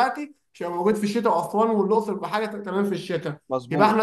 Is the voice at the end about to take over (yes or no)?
no